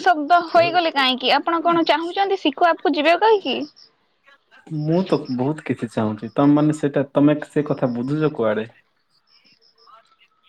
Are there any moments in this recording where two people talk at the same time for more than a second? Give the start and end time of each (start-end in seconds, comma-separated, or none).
none